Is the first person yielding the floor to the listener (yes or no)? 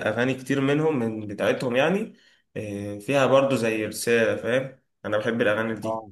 yes